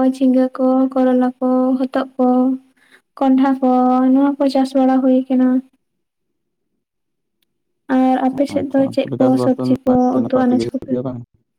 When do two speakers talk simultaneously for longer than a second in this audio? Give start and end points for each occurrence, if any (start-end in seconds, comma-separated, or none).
8.6-10.9